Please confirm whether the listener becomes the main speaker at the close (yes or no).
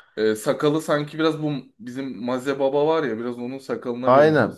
yes